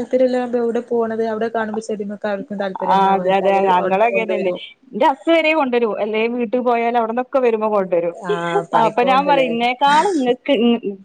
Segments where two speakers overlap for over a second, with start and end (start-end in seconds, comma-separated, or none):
3.0-4.5